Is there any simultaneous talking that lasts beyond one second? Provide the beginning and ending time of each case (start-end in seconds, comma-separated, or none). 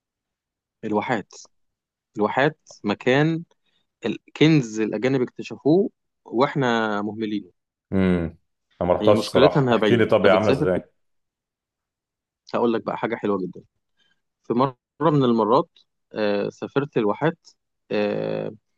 9.0-10.8